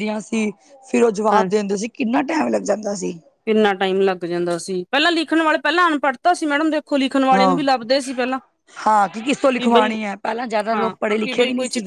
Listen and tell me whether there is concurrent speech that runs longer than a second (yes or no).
no